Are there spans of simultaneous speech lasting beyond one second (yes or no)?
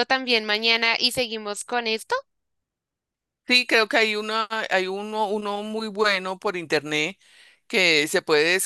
no